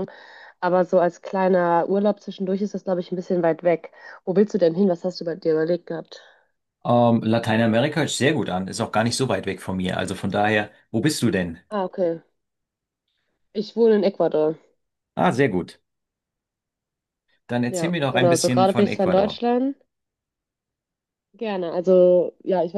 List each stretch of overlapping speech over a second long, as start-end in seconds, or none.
17.7-19.4